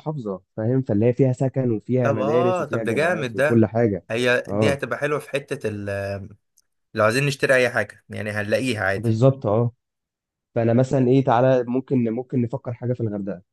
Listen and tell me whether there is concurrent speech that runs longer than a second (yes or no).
yes